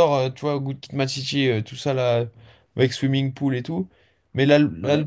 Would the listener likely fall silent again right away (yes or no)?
yes